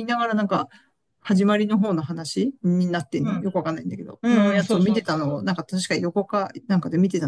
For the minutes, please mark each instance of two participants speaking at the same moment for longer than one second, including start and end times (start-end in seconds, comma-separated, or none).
4.2-5.6